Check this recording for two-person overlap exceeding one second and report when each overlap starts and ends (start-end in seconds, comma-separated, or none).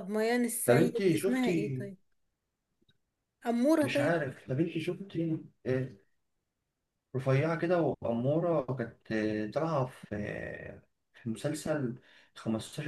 0.7-1.9